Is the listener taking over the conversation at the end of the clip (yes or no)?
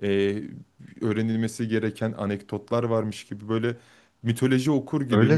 yes